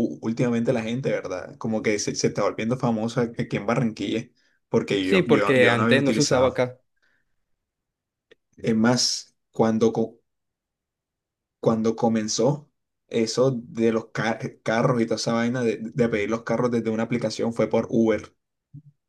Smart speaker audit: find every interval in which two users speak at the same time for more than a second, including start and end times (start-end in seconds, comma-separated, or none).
5.0-6.7